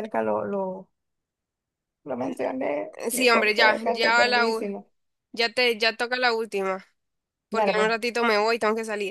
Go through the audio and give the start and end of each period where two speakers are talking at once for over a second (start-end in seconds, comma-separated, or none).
3.0-4.8